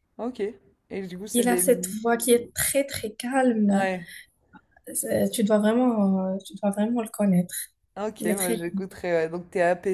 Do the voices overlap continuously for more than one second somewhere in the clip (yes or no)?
no